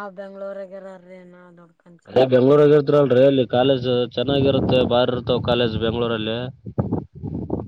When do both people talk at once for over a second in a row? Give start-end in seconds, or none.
none